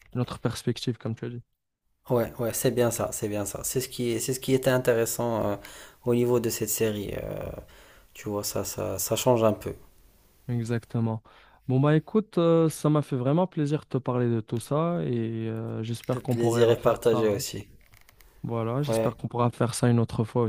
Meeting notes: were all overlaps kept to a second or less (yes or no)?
no